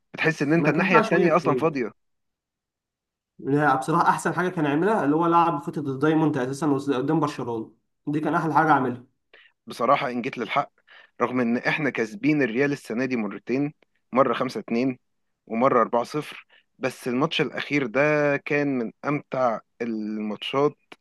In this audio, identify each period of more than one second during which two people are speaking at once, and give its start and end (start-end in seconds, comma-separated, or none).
0.5-1.8